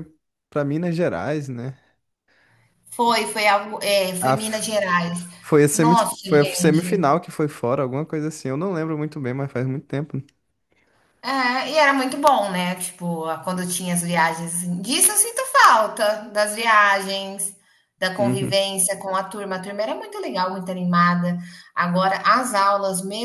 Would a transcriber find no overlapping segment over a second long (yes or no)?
no